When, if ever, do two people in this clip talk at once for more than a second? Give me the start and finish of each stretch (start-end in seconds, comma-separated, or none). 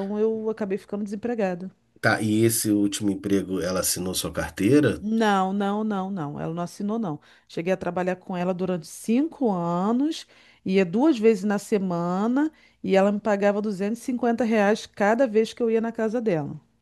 none